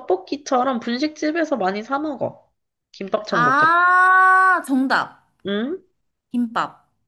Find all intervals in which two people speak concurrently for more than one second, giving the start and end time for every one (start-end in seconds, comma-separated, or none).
none